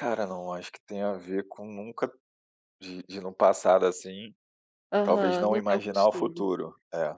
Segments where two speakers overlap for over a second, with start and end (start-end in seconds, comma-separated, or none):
5.0-6.5